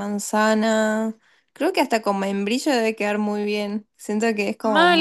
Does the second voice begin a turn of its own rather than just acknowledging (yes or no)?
yes